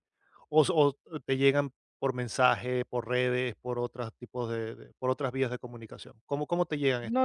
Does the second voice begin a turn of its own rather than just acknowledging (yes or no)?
yes